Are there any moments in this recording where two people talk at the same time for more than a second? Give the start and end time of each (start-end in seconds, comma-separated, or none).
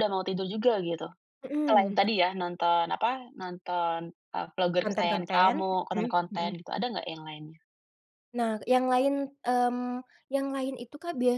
4.8-6.5